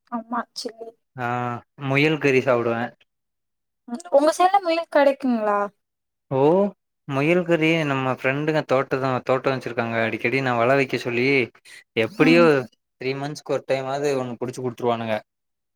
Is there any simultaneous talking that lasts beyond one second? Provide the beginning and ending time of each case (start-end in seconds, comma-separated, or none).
none